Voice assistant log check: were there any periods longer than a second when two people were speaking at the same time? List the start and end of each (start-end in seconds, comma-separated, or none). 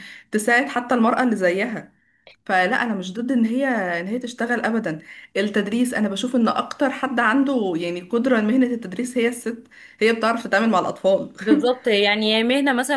none